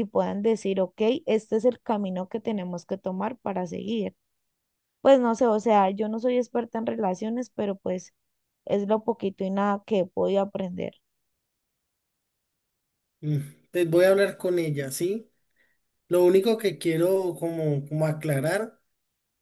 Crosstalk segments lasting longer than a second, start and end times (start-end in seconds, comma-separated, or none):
none